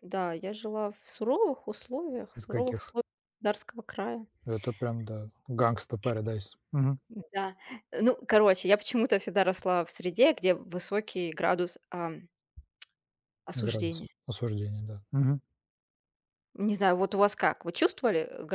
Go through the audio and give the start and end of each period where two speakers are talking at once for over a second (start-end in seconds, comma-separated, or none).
none